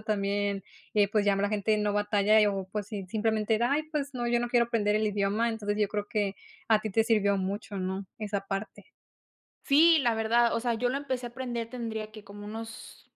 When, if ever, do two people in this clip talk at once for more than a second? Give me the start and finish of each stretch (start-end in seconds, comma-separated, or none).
none